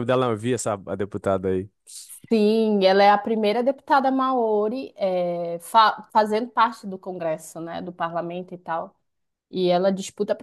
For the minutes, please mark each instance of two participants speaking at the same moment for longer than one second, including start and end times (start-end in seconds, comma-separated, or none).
none